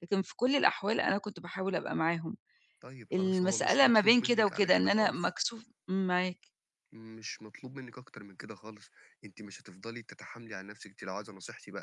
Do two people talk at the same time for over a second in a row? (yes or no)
yes